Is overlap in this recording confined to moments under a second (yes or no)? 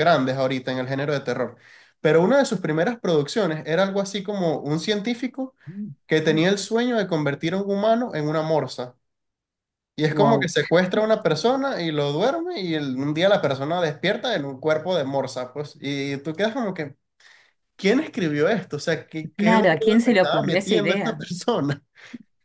no